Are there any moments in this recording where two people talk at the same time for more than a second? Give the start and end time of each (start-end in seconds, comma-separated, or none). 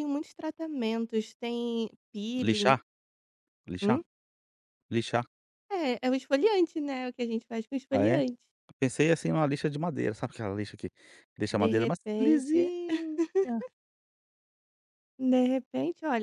11.5-12.7